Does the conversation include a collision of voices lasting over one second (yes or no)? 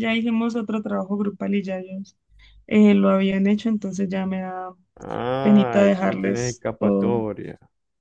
yes